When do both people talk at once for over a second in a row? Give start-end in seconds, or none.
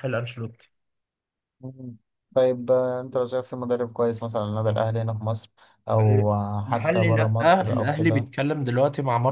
6.7-8.3